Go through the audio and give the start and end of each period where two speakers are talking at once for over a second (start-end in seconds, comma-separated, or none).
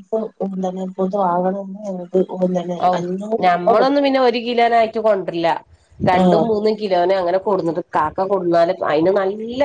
none